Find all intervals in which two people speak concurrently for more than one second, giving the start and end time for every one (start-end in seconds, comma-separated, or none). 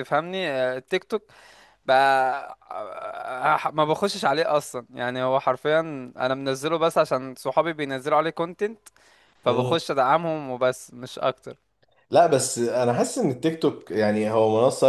none